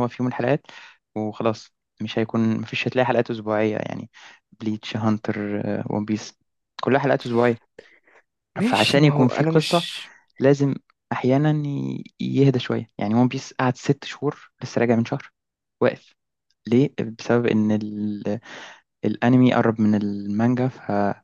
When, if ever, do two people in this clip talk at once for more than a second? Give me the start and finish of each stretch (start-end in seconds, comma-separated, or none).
8.6-9.9